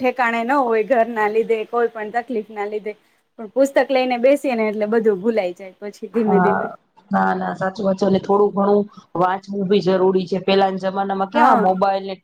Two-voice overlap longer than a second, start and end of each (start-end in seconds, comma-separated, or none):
none